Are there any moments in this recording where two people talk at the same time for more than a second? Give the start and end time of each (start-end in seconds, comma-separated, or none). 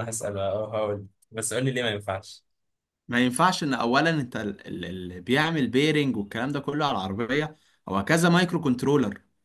none